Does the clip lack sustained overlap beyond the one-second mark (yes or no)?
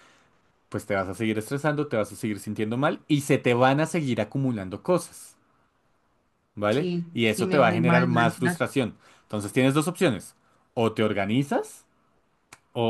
no